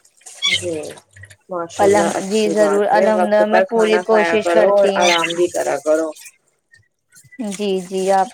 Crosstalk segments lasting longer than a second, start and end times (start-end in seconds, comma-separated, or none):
1.9-4.9